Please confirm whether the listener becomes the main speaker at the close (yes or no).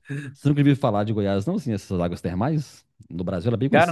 yes